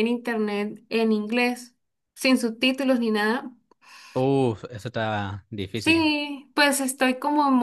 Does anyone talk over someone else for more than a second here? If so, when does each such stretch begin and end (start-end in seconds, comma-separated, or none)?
none